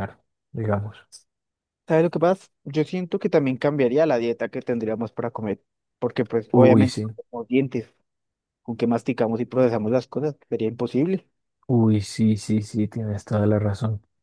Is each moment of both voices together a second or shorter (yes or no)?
yes